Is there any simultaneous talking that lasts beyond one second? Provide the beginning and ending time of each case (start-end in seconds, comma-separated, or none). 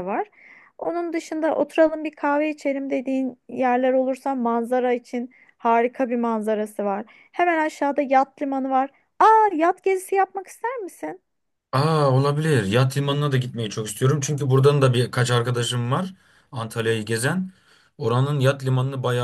none